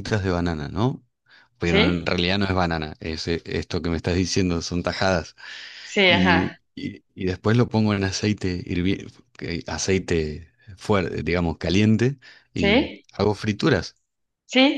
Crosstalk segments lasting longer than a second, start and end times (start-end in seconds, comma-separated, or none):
none